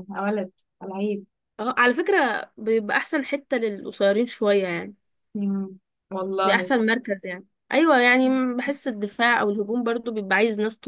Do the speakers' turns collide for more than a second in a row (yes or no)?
no